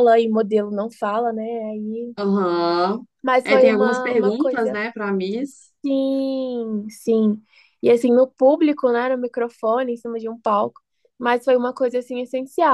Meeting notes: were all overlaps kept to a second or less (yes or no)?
no